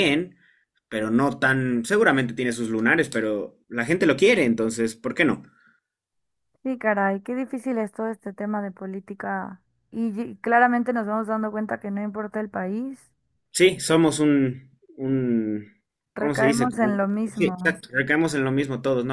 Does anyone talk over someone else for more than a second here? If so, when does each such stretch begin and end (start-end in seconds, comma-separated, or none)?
16.1-17.8